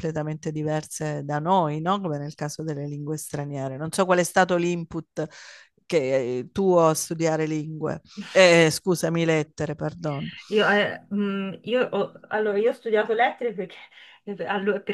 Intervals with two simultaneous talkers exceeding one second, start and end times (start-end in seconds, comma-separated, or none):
none